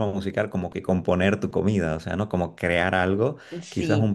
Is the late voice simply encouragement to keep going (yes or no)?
yes